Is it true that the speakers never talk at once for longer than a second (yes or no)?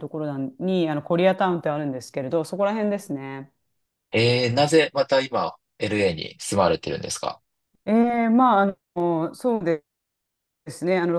yes